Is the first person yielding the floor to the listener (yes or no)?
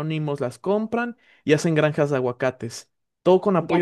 yes